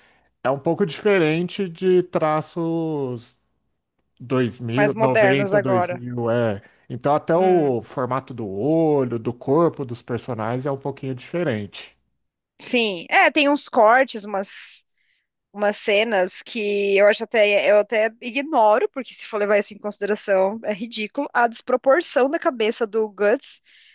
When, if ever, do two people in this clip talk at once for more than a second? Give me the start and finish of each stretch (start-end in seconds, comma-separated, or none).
4.7-6.0